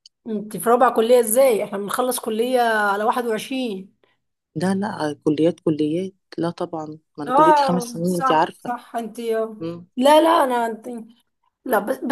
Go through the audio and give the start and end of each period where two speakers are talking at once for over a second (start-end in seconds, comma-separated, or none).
7.3-8.7